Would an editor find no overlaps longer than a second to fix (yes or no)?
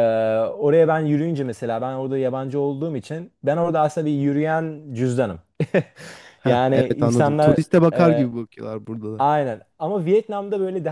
no